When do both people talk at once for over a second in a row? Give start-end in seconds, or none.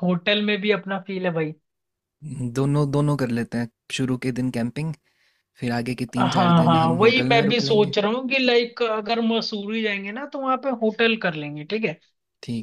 6.2-7.9